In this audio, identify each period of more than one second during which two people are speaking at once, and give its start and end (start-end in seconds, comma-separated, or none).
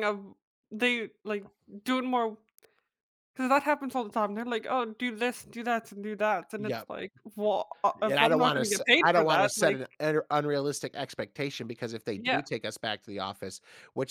8.1-9.8